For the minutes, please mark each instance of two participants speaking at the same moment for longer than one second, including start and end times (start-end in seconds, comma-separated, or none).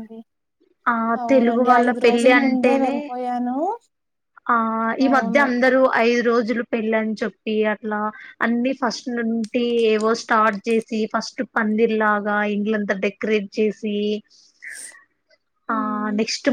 1.3-3.0